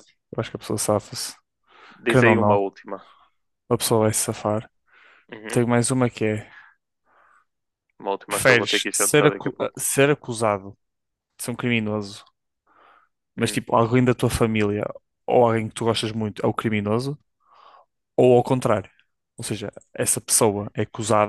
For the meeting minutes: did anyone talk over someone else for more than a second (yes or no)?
yes